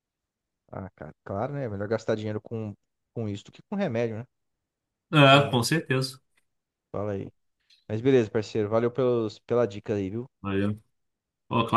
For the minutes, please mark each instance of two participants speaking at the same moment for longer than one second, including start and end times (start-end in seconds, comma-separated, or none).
none